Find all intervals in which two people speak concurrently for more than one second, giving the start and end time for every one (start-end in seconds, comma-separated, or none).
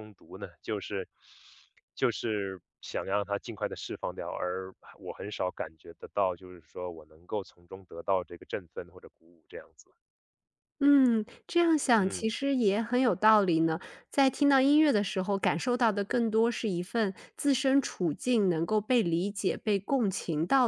none